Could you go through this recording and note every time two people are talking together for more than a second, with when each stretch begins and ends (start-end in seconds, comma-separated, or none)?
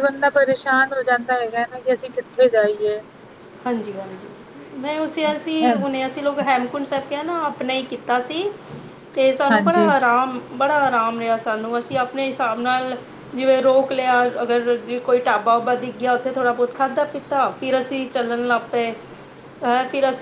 none